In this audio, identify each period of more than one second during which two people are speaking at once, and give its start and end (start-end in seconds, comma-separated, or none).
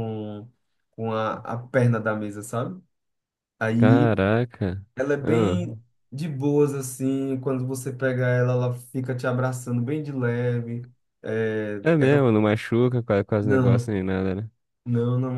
none